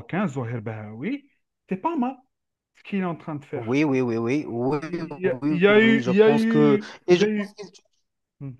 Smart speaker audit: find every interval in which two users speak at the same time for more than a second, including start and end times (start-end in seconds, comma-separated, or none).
5.3-7.5